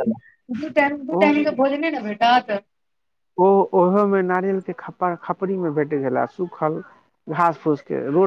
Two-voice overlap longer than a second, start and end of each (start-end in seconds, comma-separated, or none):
none